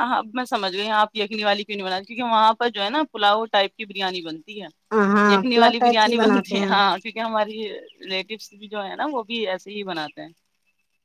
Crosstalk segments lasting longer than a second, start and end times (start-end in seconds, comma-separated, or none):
5.3-6.8